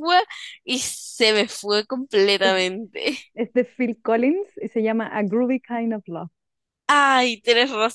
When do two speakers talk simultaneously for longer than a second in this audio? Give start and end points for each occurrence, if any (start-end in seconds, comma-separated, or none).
none